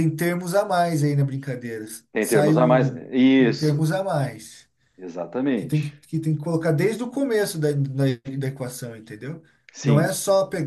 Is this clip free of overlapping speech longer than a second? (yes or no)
no